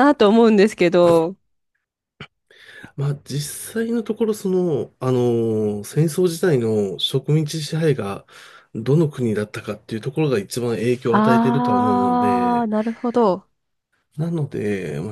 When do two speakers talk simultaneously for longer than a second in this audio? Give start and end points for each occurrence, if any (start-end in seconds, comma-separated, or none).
11.1-12.7